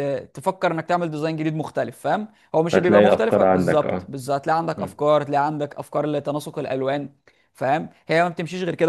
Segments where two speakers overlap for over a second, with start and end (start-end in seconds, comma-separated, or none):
2.7-4.1